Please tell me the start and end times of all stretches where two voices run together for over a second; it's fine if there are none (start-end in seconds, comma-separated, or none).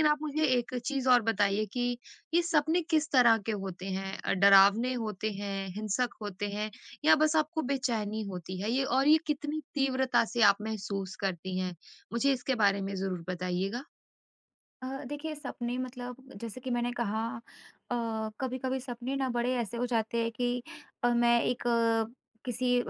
none